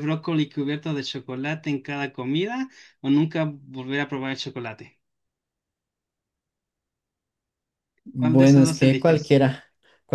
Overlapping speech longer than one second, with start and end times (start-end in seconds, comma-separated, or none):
8.2-9.4